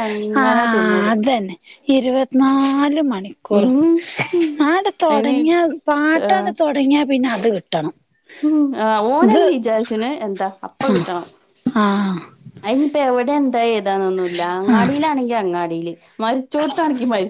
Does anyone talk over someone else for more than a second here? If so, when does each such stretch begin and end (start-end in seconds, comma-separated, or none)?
none